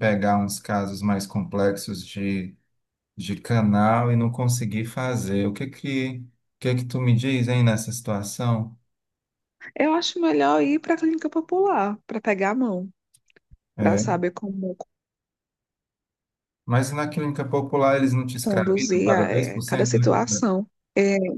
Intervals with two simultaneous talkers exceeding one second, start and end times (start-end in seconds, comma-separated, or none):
18.4-20.1